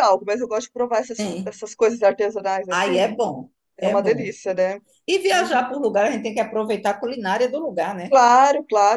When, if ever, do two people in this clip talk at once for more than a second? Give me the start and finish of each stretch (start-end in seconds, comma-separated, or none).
none